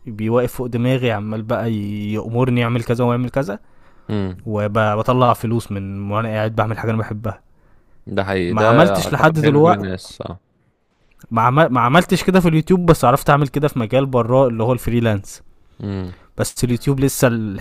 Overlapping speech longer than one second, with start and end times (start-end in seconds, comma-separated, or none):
8.5-9.8